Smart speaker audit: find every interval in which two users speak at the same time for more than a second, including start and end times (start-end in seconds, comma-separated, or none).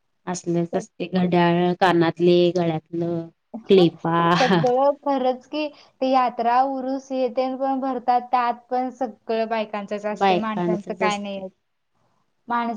10.2-11.4